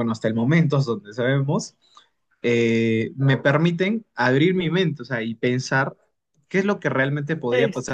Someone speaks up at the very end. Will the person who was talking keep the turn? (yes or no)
yes